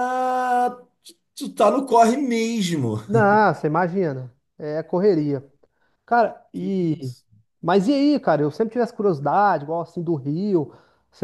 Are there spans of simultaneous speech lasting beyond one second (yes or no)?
no